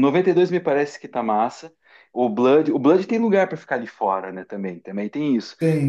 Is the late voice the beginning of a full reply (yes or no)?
yes